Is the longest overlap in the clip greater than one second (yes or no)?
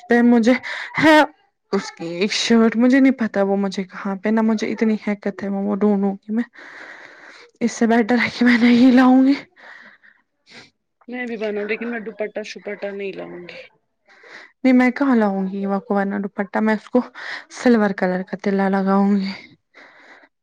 no